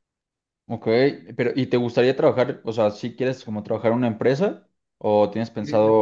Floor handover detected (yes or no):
no